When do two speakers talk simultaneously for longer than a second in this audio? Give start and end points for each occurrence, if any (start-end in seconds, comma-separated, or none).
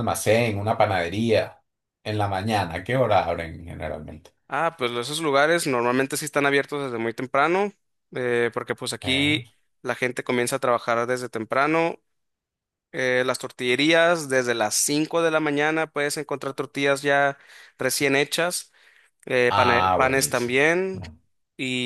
19.5-21.0